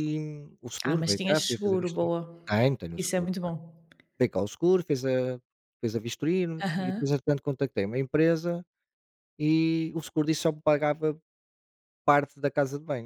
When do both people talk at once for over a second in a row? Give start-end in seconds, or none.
0.8-2.1